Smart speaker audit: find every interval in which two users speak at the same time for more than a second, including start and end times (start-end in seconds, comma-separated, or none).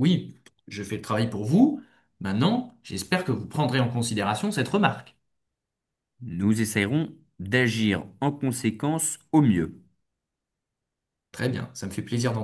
none